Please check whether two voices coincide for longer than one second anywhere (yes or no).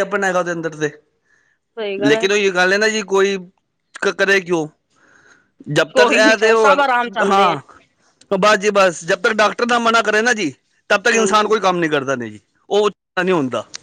yes